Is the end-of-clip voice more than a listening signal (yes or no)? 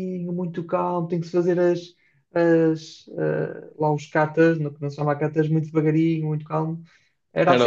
yes